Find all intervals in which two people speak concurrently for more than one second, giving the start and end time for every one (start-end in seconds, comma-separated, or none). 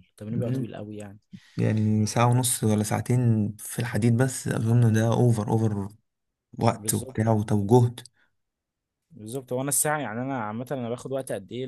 none